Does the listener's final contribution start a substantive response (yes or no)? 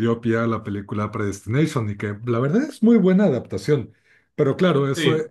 no